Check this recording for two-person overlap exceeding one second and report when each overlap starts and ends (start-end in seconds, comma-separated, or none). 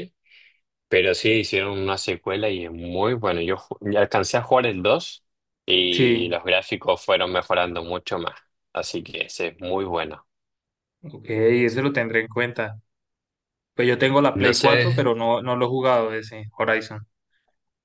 none